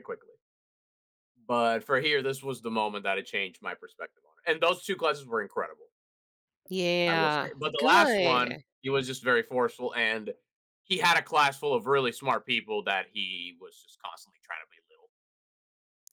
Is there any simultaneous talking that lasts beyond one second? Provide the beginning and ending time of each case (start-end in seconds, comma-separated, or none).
7.0-8.6